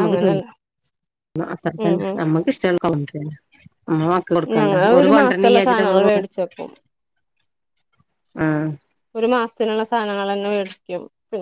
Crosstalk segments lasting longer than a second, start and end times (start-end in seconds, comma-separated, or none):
4.6-6.2